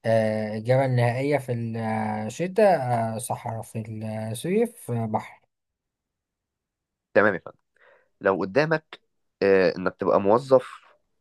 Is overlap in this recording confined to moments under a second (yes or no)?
yes